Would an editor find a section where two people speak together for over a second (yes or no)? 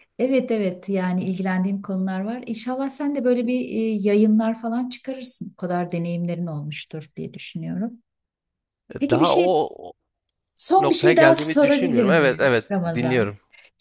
yes